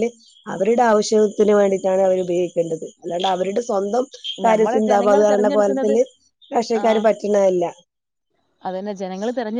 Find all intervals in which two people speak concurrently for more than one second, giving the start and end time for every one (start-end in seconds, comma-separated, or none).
4.5-6.0